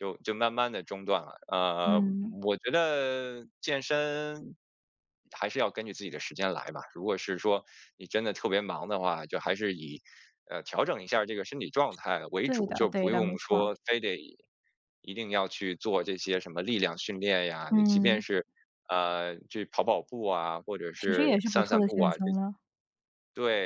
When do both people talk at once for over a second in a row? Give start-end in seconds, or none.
12.4-13.7, 21.0-22.2